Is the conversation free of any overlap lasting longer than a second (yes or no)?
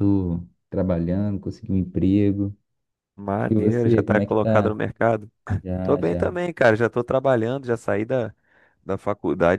no